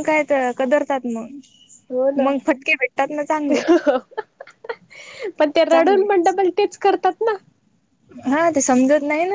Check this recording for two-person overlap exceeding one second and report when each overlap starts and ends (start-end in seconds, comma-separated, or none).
none